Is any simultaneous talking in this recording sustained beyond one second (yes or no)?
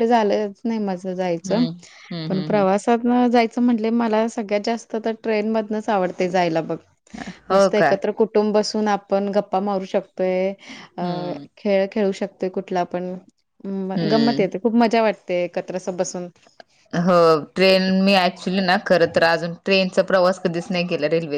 no